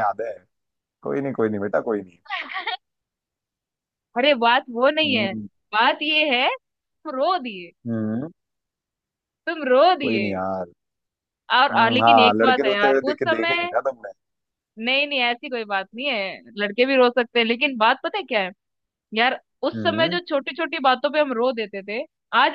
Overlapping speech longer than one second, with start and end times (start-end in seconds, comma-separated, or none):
11.7-13.7